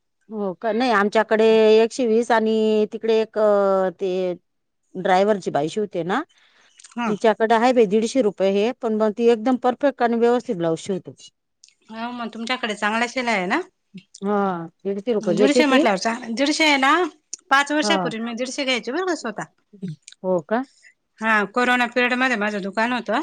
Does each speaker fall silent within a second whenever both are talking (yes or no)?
yes